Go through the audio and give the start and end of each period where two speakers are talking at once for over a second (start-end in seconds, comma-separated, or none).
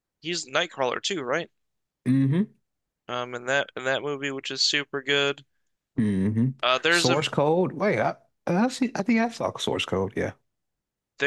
none